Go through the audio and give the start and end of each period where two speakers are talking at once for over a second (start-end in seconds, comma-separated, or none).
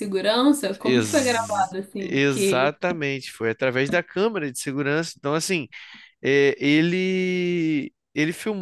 0.8-2.7